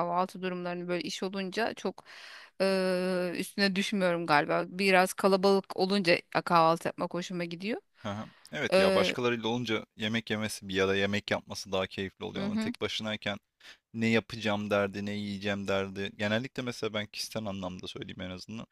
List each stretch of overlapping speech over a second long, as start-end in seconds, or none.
none